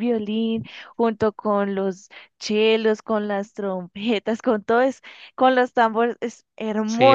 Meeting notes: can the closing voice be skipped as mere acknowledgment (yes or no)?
no